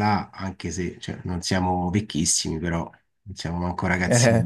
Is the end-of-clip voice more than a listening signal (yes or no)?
no